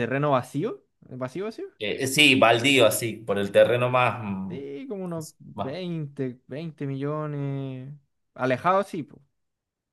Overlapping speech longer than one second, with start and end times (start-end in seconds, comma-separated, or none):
none